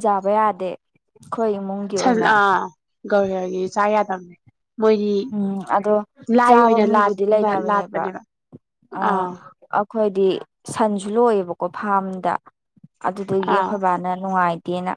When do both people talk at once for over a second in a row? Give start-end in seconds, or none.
6.5-8.0